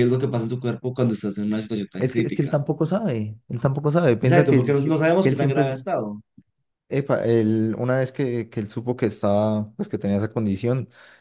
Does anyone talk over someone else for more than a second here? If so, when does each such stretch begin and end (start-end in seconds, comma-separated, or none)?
4.2-5.8